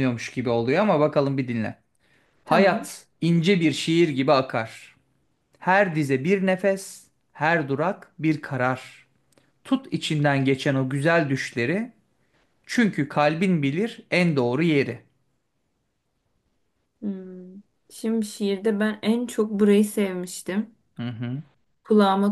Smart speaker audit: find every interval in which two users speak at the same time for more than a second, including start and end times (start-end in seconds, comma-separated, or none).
none